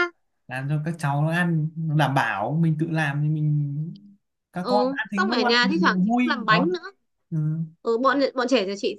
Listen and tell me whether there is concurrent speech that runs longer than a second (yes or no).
yes